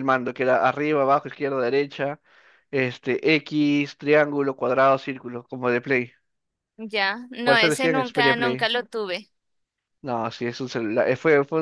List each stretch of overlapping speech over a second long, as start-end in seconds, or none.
7.4-8.7